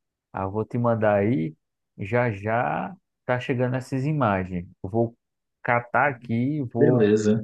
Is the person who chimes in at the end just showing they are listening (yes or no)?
yes